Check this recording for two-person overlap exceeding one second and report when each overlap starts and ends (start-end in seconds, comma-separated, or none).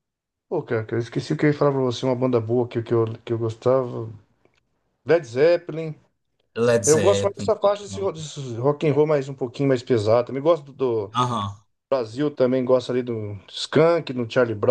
6.8-8.1